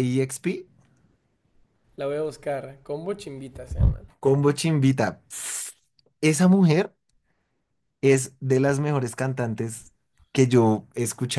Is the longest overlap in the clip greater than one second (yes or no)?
no